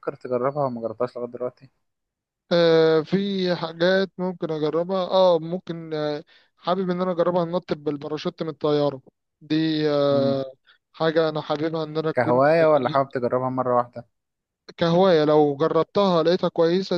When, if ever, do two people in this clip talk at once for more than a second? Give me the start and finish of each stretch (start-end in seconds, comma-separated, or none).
none